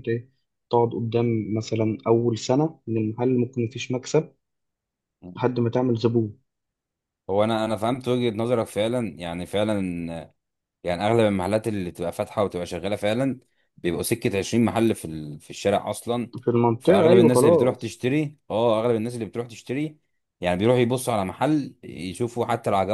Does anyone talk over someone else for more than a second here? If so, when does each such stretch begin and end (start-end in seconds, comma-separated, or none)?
16.8-18.0